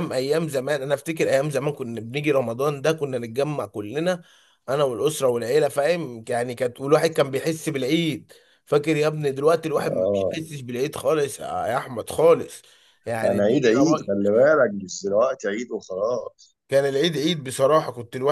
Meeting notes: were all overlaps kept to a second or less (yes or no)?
yes